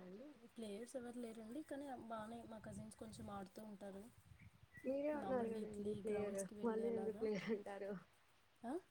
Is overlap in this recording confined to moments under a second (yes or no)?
no